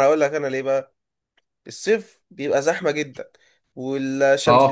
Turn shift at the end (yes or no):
no